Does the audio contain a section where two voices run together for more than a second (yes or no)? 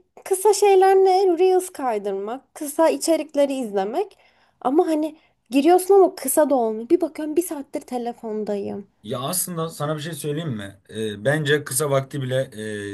no